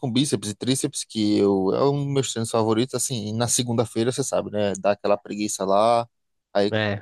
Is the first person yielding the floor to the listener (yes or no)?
no